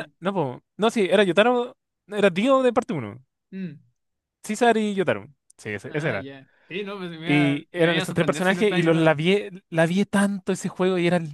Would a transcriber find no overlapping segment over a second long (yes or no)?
no